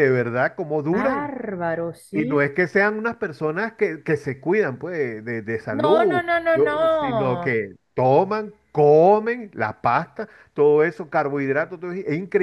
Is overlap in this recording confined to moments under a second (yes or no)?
no